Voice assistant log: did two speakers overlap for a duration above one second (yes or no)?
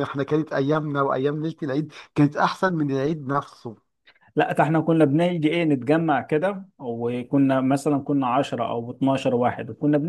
no